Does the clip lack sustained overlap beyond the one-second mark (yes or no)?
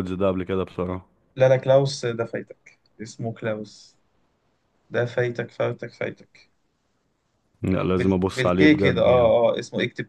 no